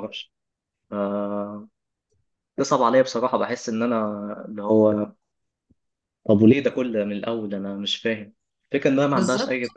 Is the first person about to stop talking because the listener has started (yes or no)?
no